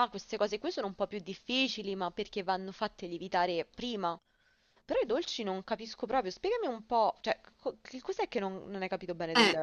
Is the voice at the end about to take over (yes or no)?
yes